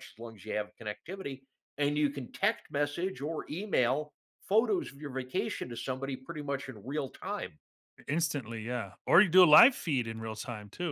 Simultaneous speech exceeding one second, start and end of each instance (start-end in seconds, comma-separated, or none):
none